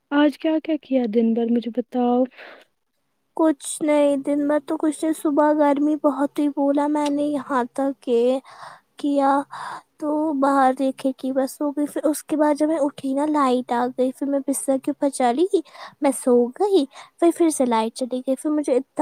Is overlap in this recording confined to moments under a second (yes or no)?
yes